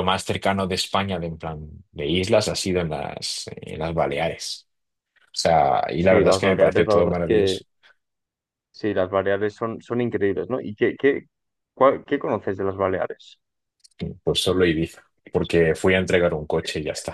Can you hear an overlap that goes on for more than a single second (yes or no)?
yes